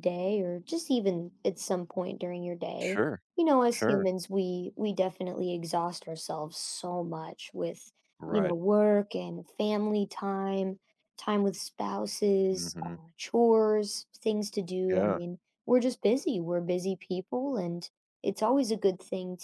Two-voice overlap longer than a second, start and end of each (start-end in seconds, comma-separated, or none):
none